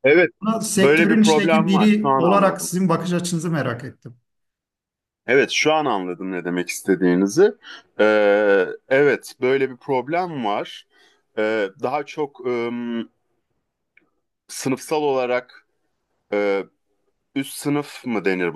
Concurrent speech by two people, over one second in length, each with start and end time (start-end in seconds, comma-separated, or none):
0.7-2.7